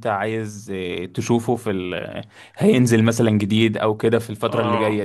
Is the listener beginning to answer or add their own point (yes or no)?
yes